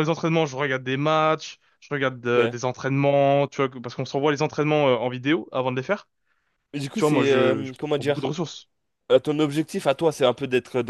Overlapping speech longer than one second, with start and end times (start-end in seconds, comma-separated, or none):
7.0-8.3